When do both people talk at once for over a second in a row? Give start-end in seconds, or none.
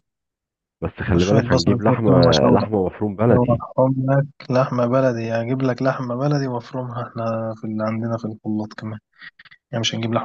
1.2-2.6